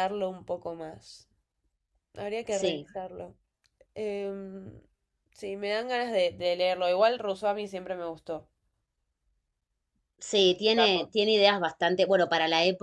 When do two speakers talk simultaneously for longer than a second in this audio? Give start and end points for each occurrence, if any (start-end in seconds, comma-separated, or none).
none